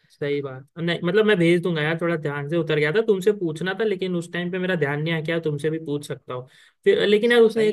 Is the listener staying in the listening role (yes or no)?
no